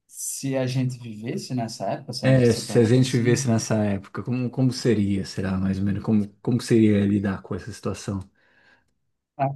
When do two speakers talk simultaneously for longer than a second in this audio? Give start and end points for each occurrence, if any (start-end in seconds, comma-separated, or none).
2.2-3.5